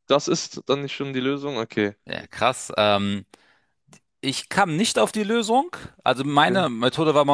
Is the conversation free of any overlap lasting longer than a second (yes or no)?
yes